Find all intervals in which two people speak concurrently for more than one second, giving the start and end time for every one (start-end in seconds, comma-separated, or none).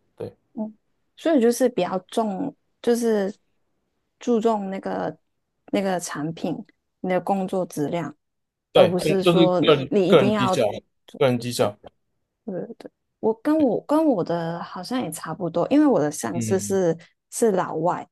8.7-10.6